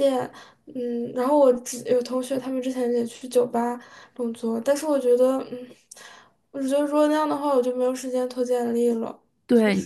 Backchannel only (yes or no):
no